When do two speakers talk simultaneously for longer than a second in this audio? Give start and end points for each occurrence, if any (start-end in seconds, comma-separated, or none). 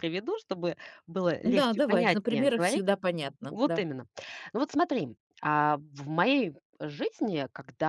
1.4-2.9